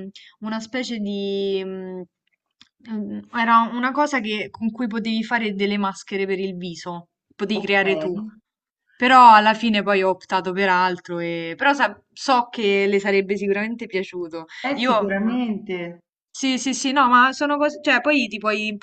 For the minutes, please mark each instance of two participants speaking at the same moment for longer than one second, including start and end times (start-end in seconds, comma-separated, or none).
none